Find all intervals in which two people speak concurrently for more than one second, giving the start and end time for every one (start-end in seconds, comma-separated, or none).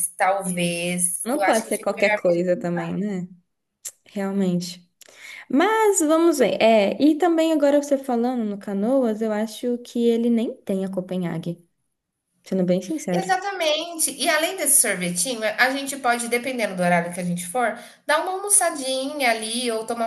1.2-2.7